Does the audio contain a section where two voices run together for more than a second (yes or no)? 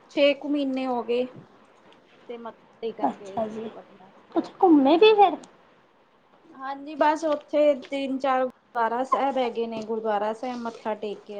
no